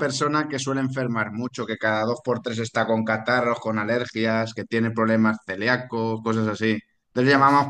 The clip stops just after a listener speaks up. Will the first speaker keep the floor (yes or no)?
yes